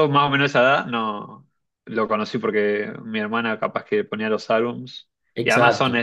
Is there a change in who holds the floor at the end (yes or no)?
no